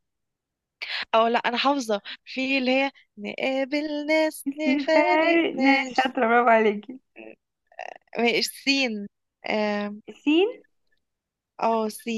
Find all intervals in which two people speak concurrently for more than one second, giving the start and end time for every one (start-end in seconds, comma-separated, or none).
4.7-6.1